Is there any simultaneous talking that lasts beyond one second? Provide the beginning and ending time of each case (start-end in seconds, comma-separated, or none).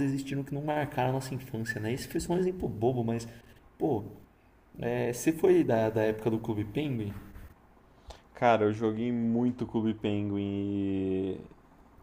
none